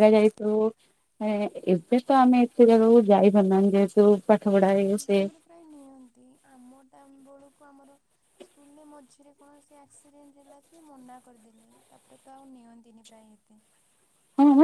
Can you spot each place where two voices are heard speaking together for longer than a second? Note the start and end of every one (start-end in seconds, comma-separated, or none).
none